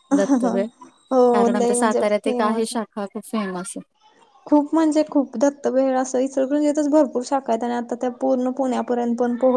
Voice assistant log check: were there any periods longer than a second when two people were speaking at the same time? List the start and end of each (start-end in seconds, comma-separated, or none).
1.3-2.7